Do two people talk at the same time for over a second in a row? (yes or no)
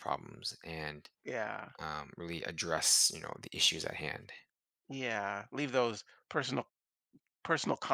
no